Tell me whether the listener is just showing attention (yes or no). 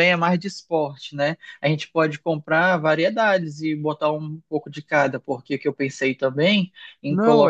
no